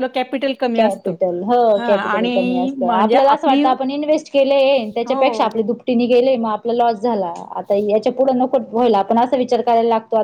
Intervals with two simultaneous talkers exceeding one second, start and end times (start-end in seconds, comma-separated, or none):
2.1-3.6